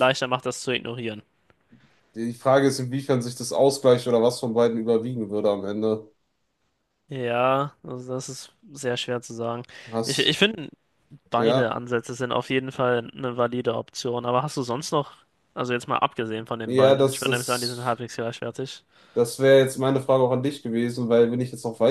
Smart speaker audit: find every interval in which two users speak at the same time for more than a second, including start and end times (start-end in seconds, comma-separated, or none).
16.6-18.0